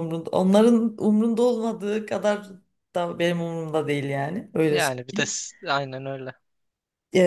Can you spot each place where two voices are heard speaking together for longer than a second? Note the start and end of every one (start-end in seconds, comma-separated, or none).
none